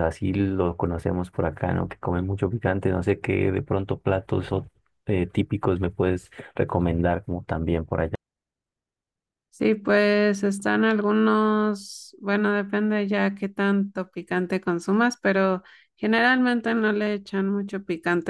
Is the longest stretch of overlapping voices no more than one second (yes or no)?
yes